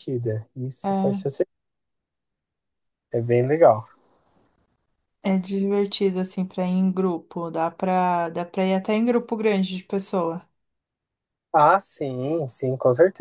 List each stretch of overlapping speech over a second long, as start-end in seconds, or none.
none